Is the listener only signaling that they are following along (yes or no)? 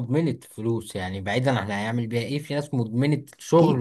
no